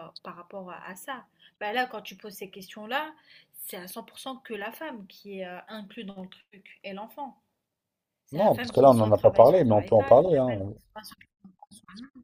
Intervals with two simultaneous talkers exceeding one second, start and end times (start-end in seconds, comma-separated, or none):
8.4-10.6